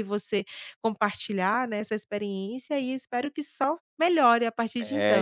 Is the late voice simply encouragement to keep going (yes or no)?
no